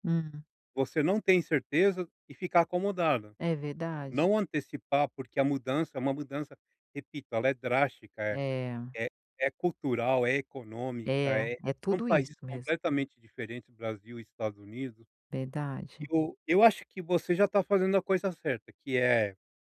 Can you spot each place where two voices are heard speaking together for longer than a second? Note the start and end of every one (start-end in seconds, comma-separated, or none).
11.1-12.7